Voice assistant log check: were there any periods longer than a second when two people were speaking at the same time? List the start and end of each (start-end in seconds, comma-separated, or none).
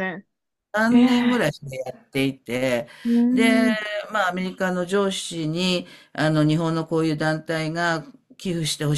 none